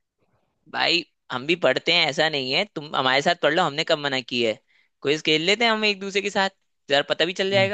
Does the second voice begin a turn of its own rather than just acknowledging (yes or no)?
yes